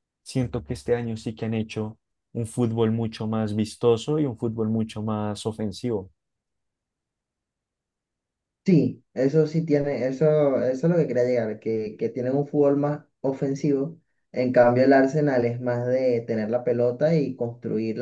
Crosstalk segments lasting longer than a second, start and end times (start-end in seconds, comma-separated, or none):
none